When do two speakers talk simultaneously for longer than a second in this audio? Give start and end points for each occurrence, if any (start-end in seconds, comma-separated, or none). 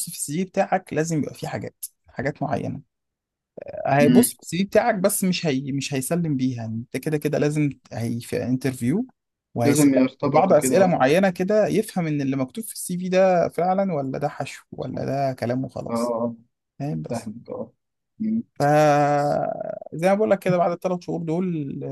9.6-11.0